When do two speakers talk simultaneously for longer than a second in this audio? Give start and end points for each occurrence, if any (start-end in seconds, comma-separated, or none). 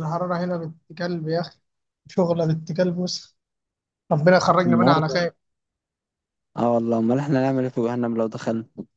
none